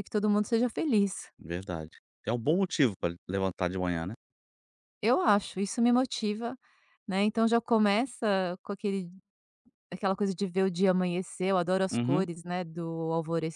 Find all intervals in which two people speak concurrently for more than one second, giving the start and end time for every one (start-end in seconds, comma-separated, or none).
none